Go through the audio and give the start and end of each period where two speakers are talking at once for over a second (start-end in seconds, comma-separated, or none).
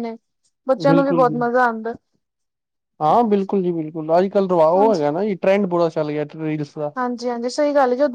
none